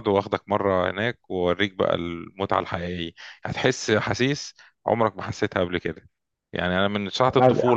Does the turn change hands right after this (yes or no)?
no